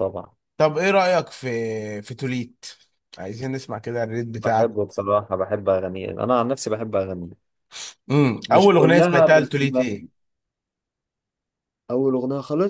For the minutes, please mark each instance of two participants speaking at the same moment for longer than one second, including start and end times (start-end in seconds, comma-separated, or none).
8.5-10.1